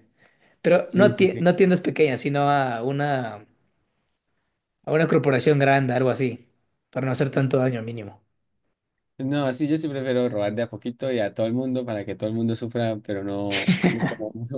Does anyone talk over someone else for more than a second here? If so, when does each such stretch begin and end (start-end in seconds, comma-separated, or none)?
none